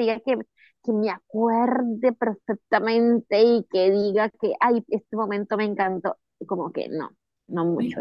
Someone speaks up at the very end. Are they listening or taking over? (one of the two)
taking over